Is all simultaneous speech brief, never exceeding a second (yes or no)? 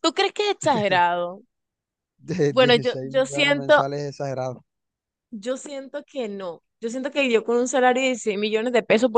no